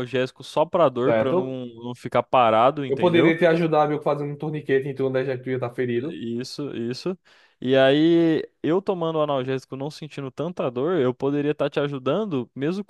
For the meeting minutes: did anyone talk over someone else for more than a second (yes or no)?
no